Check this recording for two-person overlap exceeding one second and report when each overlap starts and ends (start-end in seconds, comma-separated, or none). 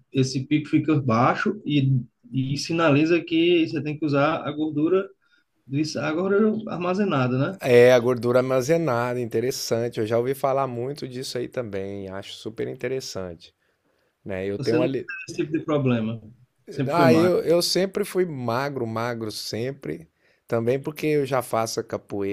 none